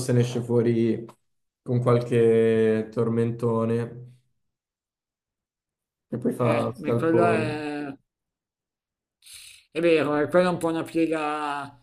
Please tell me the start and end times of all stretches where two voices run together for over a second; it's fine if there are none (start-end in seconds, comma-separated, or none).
6.4-7.6